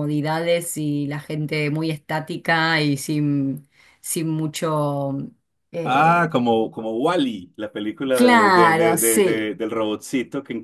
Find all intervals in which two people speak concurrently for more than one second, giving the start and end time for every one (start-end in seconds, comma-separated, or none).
8.1-9.5